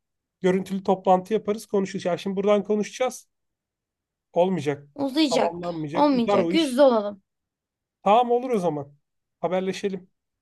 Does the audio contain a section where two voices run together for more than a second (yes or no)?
yes